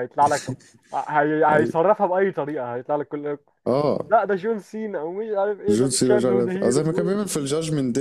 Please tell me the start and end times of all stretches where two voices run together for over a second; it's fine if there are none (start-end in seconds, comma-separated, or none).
5.7-7.3